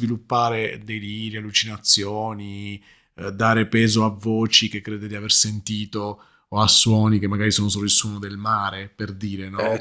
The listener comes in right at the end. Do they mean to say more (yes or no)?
yes